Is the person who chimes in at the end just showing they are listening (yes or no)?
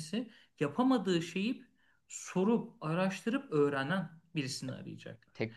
no